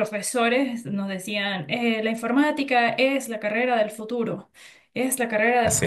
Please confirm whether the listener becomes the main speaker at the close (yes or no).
no